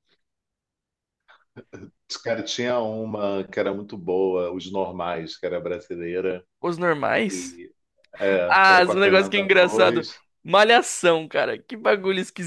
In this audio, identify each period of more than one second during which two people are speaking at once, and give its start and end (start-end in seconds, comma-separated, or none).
8.4-10.1